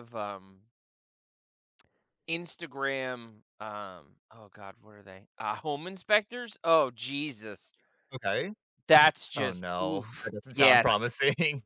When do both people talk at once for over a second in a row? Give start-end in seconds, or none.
9.4-11.0